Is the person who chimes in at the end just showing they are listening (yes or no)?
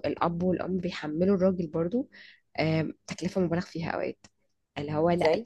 yes